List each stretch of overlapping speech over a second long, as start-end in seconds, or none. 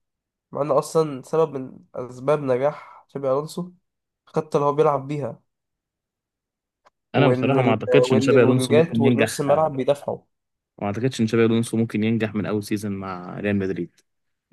7.2-9.4